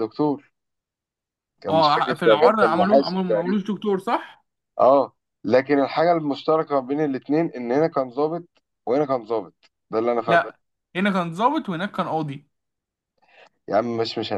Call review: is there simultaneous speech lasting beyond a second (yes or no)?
yes